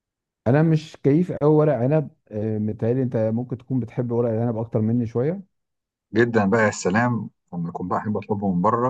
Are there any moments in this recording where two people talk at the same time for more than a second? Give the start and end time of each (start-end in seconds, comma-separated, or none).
none